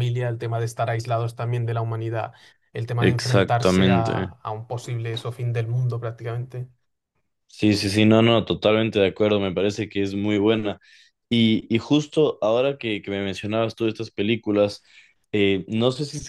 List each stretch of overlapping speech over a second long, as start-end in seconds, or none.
3.0-4.4